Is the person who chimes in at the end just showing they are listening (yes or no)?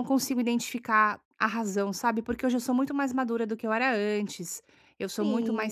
no